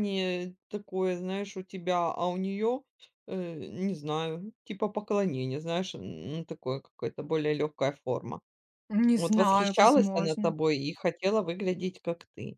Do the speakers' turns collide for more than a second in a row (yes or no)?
yes